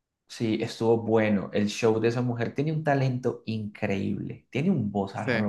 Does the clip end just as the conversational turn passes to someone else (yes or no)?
no